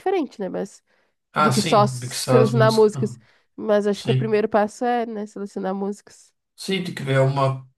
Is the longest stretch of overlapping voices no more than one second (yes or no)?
no